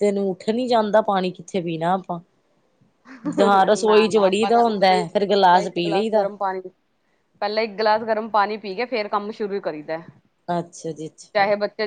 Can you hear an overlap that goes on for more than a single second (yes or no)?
yes